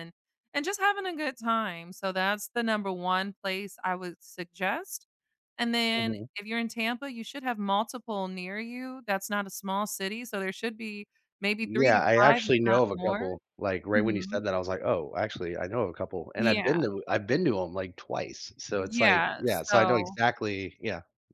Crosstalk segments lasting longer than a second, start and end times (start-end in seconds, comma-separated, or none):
11.6-13.3, 18.8-20.2